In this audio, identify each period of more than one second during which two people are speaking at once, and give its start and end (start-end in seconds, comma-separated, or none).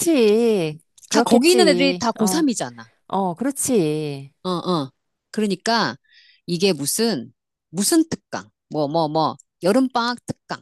1.1-2.4